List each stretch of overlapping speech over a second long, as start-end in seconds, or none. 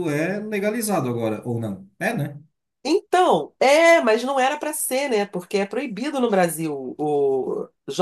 none